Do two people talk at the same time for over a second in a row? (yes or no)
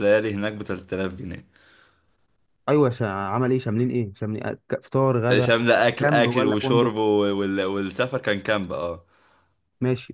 yes